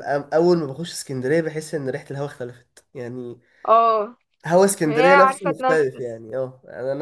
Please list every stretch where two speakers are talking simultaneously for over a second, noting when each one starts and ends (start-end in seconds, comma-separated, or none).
4.8-6.2